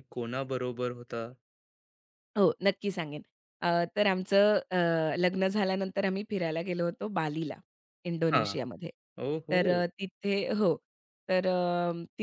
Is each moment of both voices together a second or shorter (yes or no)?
yes